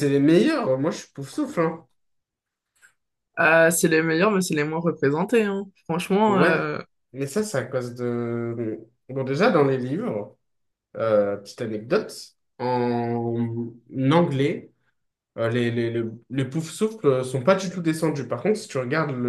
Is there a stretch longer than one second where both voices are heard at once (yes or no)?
no